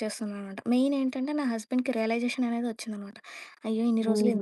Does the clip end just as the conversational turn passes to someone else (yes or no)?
yes